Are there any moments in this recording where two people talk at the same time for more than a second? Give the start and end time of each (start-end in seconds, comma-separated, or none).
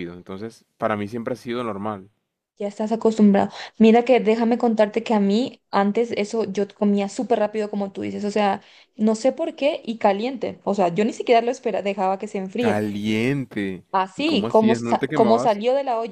13.9-15.6